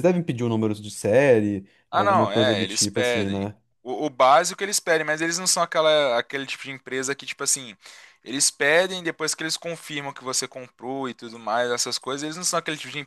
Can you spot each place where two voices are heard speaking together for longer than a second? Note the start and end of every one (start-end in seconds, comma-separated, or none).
1.9-3.5